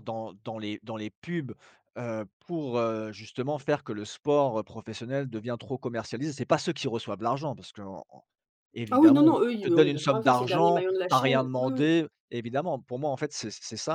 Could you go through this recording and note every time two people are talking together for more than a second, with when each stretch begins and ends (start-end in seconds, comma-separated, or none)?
8.9-11.9